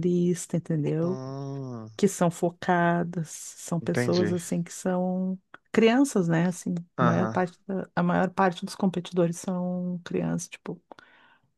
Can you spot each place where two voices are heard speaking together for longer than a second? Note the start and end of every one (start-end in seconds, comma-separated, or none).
none